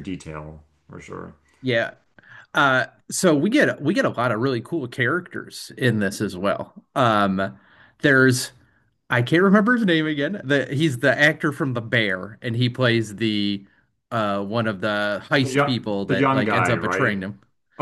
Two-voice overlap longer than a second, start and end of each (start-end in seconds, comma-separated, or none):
15.4-17.2